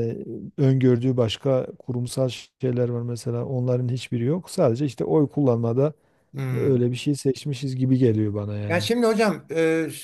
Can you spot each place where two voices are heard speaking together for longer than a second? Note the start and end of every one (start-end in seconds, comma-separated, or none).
none